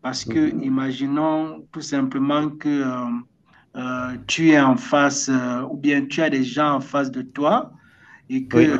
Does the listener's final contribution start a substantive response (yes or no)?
no